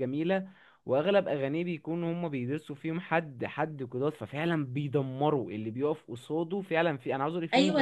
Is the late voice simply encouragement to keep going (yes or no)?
no